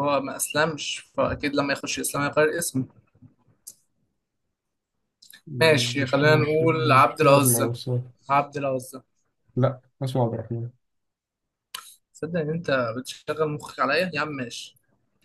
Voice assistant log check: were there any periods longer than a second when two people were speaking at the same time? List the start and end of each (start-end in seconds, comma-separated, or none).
6.0-7.7